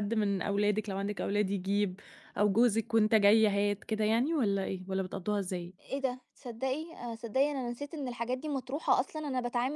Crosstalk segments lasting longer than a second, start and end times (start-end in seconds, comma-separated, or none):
none